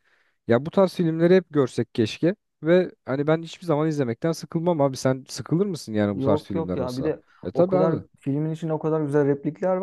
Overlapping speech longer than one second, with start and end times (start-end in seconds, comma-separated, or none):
6.1-8.0